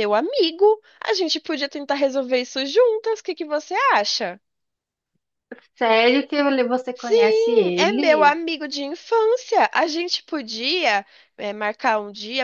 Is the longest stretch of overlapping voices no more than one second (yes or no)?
no